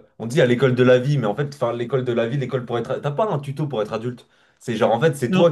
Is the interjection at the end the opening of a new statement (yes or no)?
no